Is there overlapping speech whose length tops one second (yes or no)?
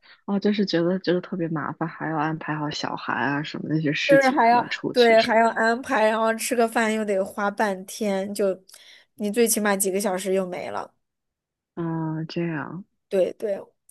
yes